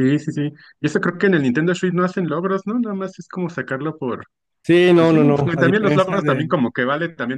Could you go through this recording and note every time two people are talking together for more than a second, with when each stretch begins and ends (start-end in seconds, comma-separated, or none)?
5.0-6.4